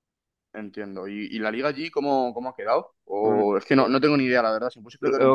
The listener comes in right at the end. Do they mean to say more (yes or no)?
yes